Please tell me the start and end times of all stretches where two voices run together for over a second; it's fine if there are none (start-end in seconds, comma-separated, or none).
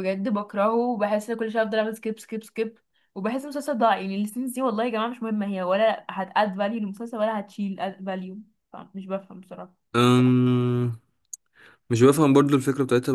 none